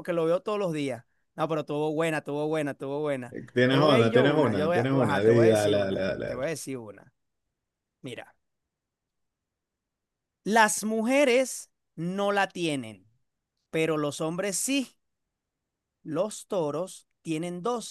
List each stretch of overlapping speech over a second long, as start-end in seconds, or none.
3.3-6.5